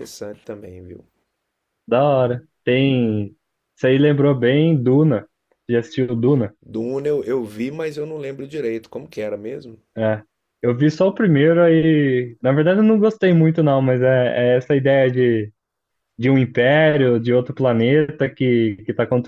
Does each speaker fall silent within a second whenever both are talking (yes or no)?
yes